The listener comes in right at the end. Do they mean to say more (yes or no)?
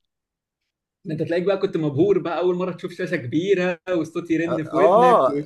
yes